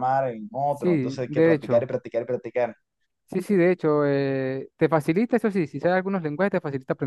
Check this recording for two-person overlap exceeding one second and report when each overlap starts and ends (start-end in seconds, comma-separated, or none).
0.7-1.9